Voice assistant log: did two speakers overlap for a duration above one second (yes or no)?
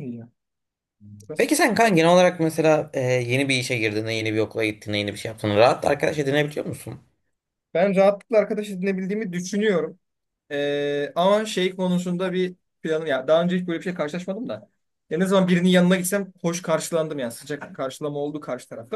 no